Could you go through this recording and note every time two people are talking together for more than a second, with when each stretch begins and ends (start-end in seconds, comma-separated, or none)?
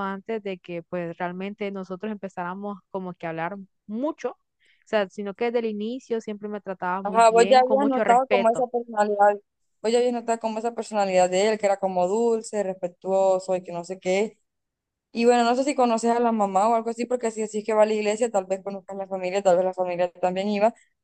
7.0-8.7